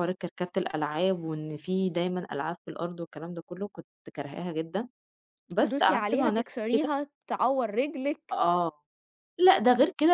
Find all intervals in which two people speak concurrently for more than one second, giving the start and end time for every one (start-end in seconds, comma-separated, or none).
5.6-6.9